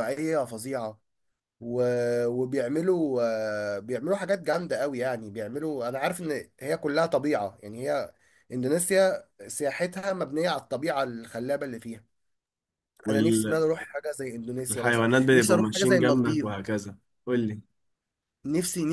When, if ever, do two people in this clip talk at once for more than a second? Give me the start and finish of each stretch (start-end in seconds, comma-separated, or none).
15.2-16.5